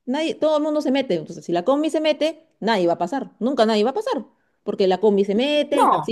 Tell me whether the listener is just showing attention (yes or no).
yes